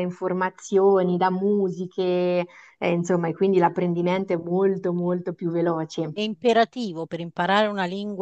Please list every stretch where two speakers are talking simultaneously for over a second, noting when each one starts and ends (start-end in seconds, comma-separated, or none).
none